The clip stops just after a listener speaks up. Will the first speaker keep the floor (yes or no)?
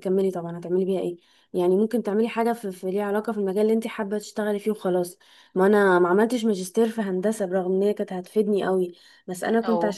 yes